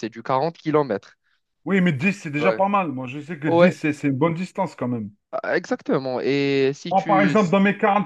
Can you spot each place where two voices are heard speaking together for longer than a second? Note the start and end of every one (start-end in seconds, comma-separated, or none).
none